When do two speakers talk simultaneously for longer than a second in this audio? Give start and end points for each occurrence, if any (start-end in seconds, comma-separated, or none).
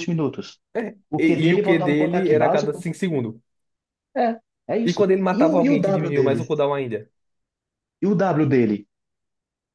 1.1-2.8, 4.8-6.5